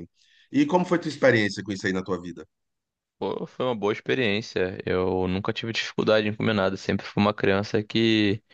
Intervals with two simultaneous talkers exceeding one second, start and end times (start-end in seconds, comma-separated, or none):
none